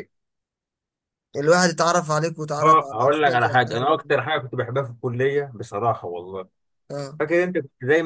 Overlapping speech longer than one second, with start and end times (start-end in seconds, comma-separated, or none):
2.6-4.1